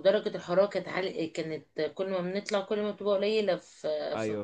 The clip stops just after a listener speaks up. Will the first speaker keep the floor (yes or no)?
yes